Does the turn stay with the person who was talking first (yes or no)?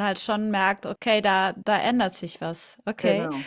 yes